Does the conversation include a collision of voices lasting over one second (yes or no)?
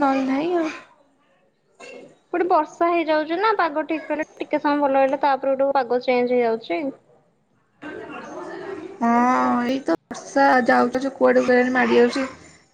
no